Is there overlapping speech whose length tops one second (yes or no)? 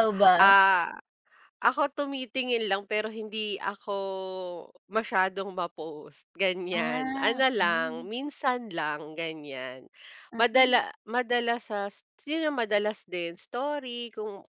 yes